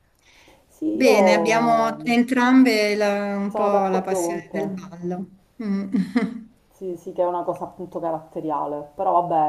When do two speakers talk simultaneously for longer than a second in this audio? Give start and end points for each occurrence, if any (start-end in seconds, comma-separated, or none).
0.9-2.2, 3.5-4.8